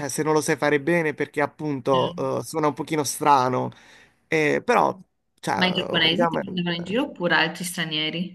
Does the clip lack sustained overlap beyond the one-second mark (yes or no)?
no